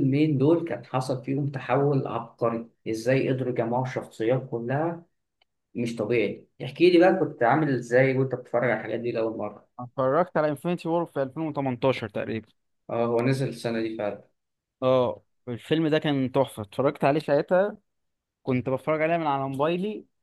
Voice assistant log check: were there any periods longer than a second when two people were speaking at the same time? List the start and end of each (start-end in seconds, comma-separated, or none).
none